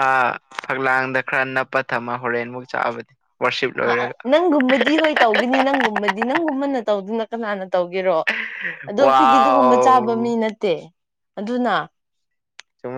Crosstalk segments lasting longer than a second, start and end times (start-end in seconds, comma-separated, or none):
9.1-10.3